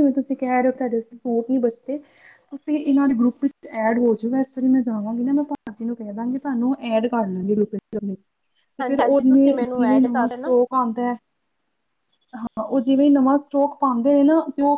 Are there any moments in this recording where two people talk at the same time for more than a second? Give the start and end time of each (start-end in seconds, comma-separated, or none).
8.8-10.5